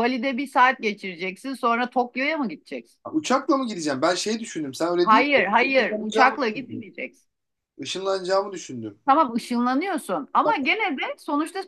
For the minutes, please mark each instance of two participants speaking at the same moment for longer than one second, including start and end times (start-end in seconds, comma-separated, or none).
5.0-6.9